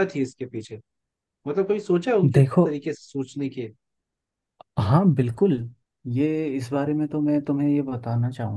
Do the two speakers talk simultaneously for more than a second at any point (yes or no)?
no